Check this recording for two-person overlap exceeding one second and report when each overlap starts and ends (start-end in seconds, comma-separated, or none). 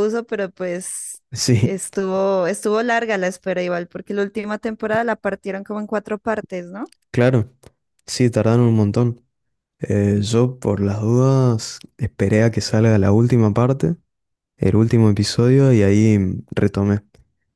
none